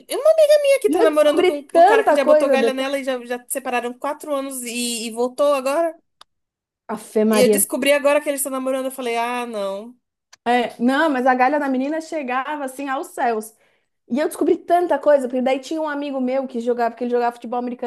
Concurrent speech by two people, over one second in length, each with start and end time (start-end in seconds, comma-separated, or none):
0.8-3.0